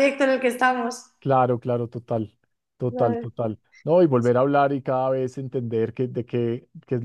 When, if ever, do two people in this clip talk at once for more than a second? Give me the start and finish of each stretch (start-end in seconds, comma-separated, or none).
none